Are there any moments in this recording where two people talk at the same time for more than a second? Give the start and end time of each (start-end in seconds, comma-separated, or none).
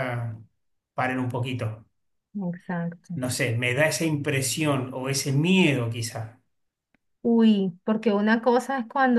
none